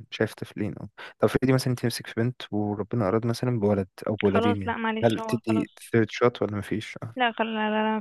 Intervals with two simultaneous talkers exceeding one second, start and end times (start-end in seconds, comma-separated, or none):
4.2-5.8